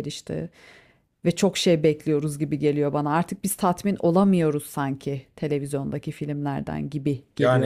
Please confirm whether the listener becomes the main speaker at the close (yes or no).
yes